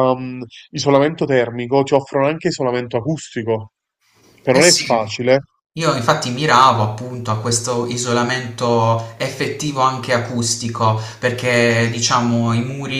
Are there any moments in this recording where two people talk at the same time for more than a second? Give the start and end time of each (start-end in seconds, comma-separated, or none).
none